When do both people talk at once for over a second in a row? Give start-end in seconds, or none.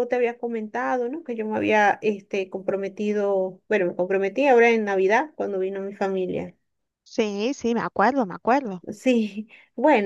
none